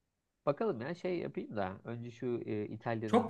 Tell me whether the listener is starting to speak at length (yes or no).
yes